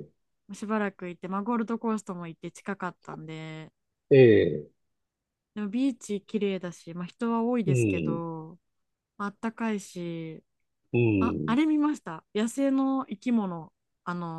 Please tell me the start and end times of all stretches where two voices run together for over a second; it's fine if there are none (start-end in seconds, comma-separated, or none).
none